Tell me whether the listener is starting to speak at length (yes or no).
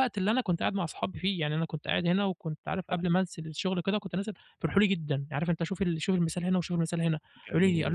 no